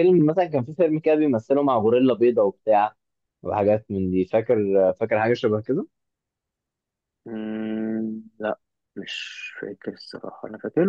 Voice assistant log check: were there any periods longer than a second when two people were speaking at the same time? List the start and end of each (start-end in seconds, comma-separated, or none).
none